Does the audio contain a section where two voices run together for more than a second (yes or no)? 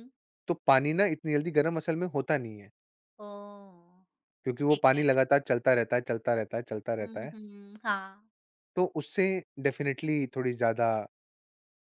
no